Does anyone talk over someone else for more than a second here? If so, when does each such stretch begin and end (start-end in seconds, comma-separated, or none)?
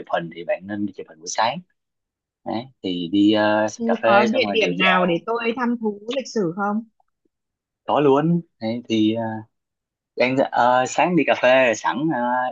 3.8-5.2